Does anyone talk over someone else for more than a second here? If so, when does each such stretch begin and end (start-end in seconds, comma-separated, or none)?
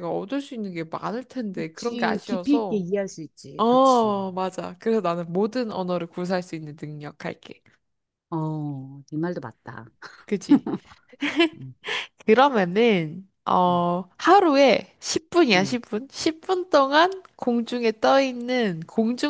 1.5-2.9